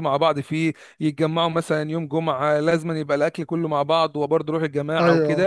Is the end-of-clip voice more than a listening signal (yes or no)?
no